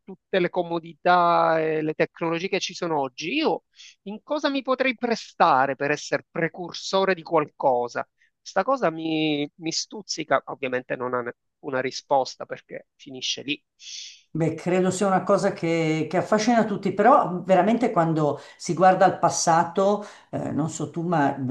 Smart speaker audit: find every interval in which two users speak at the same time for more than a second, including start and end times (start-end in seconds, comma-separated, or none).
none